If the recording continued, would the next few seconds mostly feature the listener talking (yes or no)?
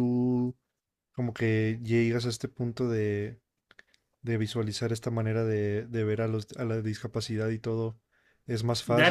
yes